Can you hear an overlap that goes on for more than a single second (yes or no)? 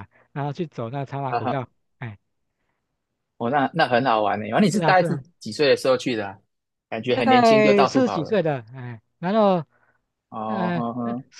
yes